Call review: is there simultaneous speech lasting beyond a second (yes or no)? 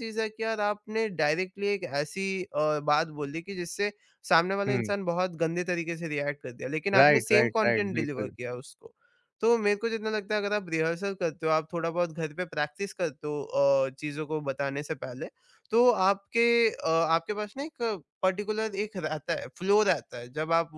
yes